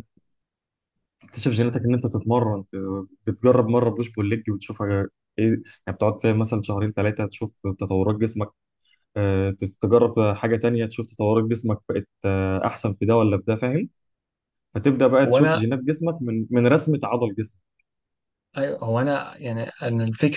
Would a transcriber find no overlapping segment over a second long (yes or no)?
yes